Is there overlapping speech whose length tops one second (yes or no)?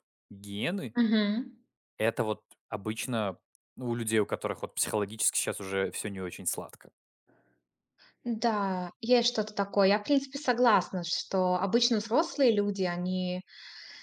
no